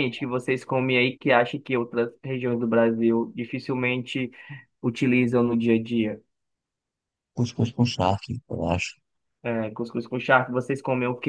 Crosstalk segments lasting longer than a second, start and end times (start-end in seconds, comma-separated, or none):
none